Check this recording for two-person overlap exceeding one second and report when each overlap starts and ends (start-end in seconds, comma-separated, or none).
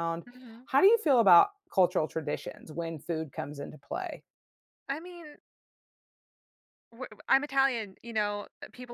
none